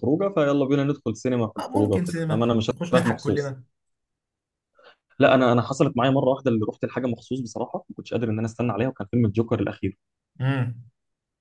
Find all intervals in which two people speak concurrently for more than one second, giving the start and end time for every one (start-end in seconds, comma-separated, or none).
1.6-3.5